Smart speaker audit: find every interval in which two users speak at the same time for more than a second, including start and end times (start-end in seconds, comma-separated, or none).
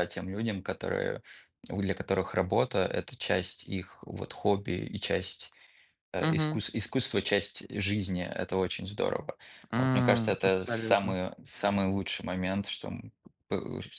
9.8-11.2